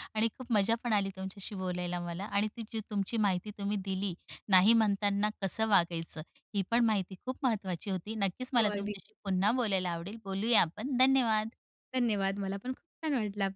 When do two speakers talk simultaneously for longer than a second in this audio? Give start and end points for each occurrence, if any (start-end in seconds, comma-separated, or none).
none